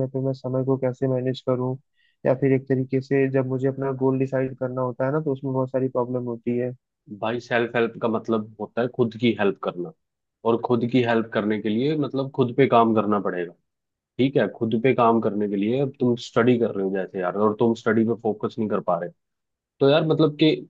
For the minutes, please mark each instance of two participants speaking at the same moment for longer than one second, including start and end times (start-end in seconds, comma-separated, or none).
none